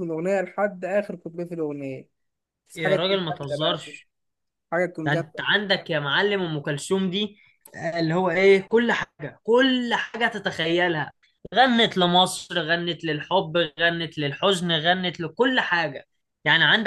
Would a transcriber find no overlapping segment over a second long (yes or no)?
no